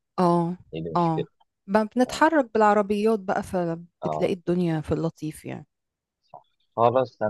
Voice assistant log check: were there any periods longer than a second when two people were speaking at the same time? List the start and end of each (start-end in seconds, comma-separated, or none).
none